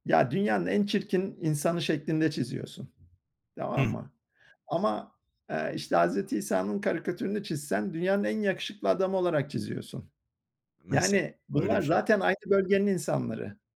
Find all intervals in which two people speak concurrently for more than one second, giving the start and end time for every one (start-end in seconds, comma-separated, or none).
10.9-12.3